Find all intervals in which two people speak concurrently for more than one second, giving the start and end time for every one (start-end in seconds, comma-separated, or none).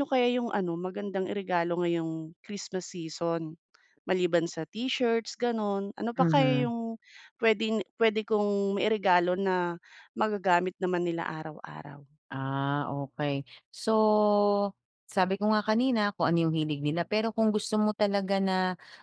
none